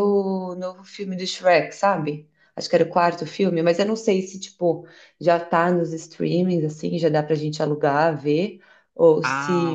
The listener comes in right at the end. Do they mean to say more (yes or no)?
yes